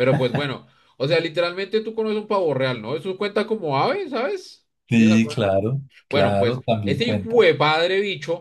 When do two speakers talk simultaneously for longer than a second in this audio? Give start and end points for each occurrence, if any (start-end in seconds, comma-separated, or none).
6.1-7.5